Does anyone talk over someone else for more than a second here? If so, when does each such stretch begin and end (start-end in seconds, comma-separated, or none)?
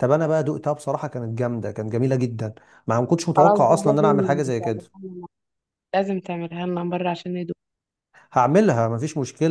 3.4-4.8